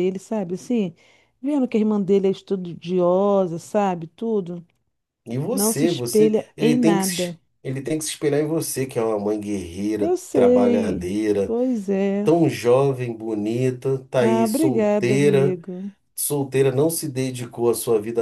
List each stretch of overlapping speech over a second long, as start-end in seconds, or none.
5.5-7.4, 10.0-11.5, 14.2-15.6